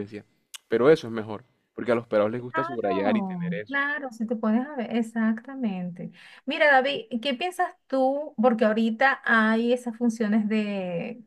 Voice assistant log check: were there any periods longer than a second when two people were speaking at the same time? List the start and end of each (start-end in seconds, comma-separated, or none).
2.5-3.8